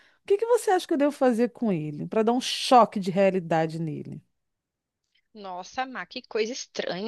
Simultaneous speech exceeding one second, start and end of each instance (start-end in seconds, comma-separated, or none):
none